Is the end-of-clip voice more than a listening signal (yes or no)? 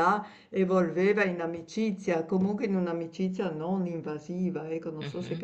yes